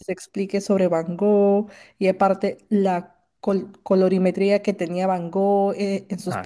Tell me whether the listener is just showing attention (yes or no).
yes